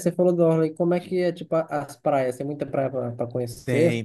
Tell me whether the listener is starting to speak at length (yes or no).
yes